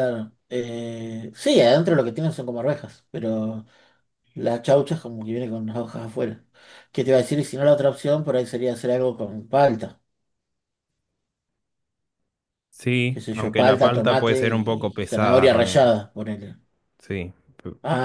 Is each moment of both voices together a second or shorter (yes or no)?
no